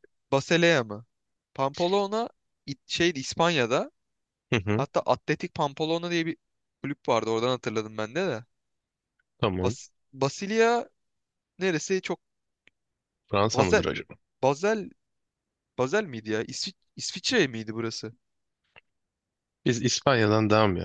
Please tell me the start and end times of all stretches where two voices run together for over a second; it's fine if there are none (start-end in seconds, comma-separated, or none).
none